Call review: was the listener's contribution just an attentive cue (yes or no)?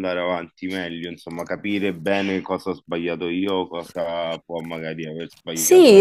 no